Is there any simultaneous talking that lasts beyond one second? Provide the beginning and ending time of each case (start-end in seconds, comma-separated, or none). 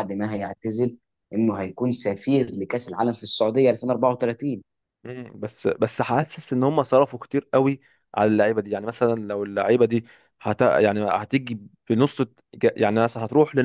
none